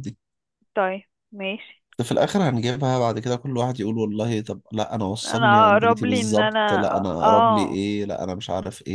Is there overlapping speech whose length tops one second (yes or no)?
yes